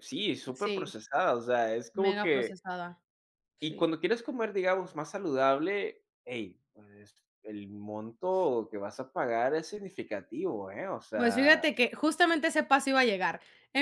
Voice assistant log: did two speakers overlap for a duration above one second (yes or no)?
no